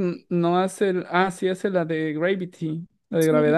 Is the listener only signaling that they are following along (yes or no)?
no